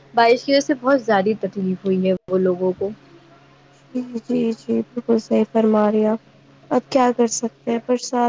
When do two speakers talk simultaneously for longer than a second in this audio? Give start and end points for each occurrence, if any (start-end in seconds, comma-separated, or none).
none